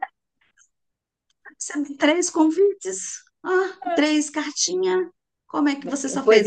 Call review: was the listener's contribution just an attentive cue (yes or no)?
no